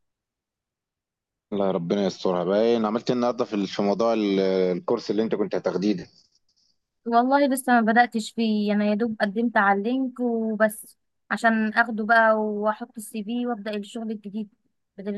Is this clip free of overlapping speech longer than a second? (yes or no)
yes